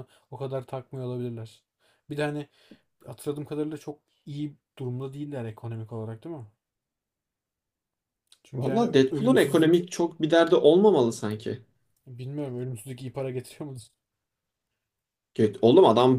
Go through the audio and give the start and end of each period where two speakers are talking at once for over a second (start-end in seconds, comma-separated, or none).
8.6-9.8